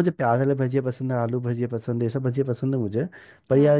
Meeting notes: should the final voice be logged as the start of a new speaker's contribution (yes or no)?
no